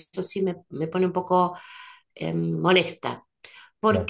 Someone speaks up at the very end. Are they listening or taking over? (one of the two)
listening